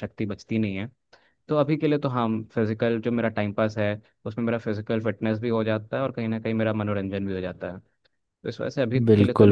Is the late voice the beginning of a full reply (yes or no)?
yes